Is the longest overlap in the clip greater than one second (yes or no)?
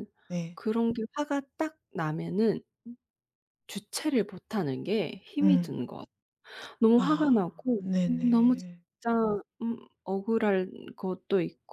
yes